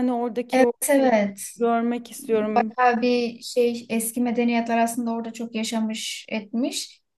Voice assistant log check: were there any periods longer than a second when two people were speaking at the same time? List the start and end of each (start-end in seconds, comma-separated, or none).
none